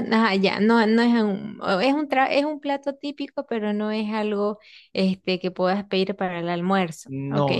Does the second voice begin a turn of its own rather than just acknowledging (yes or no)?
yes